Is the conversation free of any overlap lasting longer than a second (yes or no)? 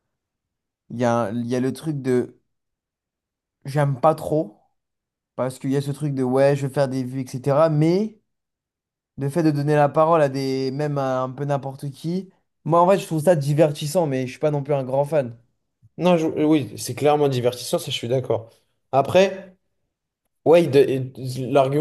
yes